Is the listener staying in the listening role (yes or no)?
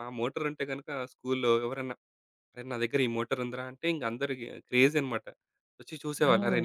yes